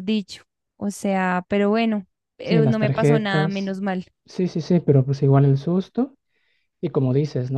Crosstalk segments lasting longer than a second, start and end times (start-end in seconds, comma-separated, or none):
2.4-3.7